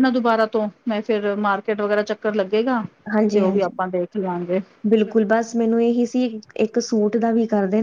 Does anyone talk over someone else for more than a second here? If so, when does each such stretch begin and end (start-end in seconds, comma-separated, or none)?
none